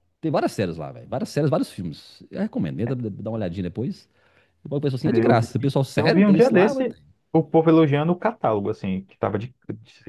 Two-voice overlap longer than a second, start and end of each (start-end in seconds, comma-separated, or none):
5.1-6.9